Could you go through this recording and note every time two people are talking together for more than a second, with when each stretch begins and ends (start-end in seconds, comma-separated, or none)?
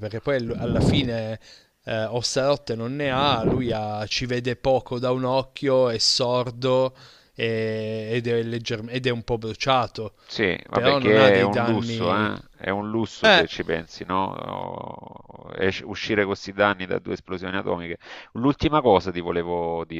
10.7-12.3